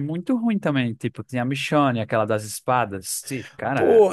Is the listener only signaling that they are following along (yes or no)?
no